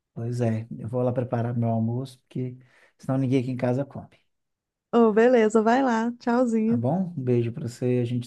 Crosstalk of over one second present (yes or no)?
no